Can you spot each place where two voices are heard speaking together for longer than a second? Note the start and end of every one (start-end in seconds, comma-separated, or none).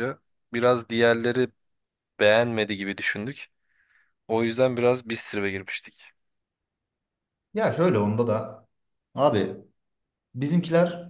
none